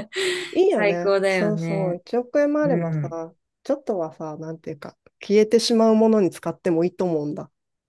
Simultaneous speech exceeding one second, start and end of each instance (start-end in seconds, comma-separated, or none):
0.7-2.0